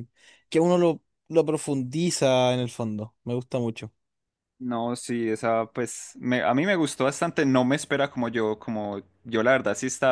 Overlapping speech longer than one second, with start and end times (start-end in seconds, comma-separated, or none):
none